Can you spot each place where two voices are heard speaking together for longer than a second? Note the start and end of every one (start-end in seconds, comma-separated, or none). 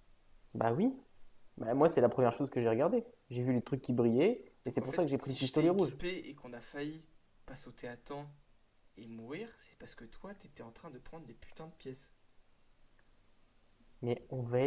4.7-6.0